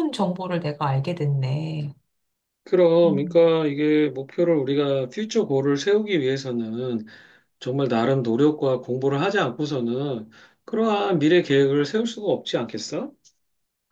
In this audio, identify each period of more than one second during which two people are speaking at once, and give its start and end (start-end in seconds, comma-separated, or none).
none